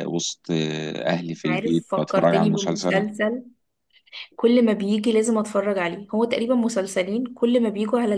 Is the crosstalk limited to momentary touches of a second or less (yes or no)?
no